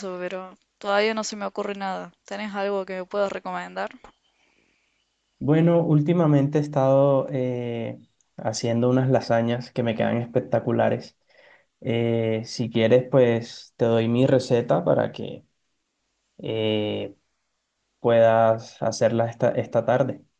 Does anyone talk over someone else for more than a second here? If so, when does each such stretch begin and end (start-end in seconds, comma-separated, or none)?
none